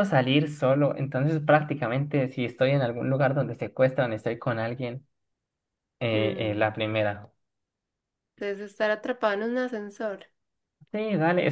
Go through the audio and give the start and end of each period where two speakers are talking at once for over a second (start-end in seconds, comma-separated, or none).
none